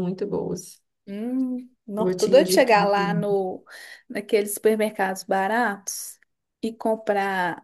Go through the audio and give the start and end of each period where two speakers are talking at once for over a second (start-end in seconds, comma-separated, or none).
2.0-3.2